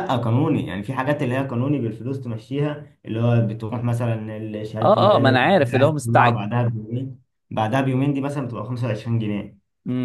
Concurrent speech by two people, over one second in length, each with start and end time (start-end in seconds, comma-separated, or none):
4.8-6.5